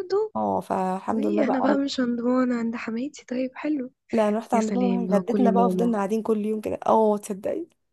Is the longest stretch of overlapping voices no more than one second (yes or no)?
no